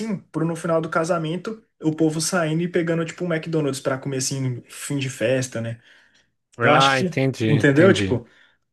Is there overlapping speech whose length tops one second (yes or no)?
yes